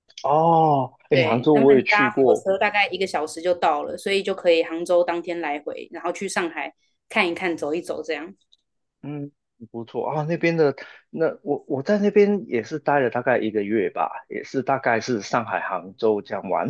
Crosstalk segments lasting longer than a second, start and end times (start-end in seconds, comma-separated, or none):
1.1-2.4